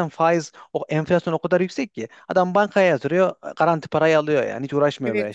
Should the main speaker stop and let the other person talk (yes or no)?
yes